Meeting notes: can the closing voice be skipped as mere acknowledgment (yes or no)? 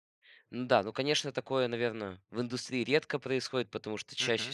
yes